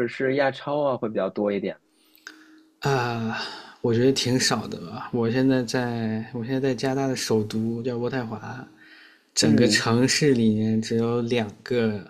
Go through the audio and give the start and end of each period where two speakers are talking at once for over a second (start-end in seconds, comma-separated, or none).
none